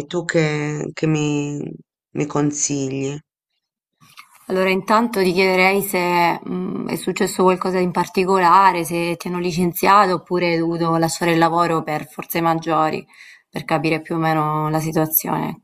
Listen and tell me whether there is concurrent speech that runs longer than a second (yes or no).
no